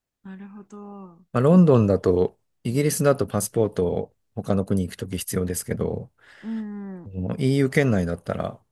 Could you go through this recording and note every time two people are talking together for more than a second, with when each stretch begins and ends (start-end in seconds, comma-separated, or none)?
none